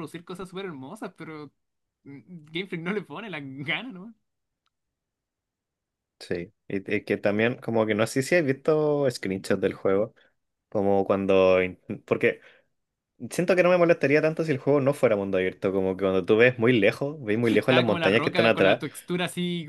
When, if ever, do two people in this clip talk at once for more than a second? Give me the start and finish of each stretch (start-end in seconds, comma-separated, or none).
17.5-18.8